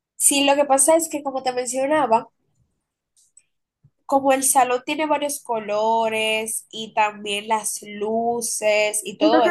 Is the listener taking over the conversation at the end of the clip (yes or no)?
yes